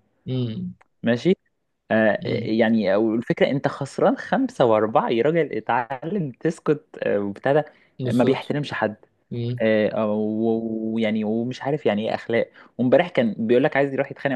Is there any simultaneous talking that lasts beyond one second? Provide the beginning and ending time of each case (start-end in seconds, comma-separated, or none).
none